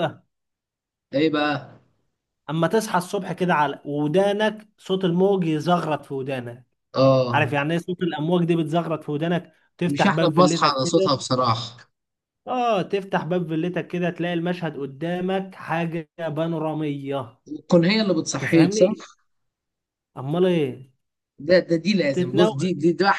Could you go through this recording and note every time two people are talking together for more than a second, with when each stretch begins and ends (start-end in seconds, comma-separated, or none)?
9.9-11.2